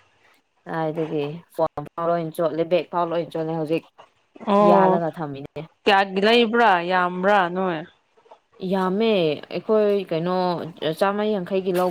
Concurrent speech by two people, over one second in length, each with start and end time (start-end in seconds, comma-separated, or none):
none